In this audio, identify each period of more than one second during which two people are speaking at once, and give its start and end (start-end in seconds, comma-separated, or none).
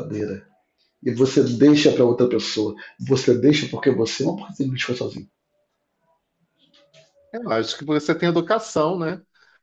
none